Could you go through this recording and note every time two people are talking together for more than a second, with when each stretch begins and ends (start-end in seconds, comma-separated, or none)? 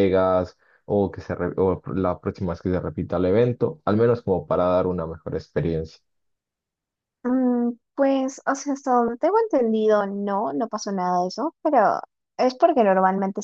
none